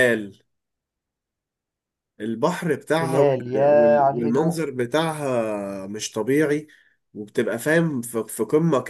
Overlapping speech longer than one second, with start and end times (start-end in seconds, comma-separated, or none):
3.0-4.7